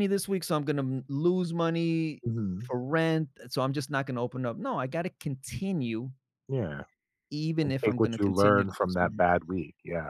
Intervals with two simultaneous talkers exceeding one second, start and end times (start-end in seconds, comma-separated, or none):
7.6-9.2